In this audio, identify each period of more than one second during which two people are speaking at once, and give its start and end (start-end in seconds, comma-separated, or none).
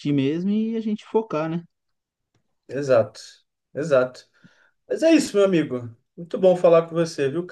none